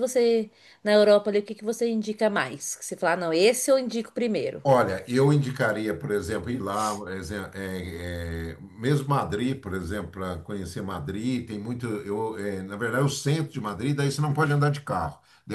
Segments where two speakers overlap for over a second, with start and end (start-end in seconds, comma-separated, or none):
none